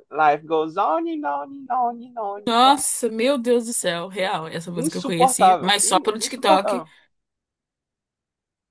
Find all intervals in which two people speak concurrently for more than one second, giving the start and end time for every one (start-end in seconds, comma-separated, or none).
4.8-6.8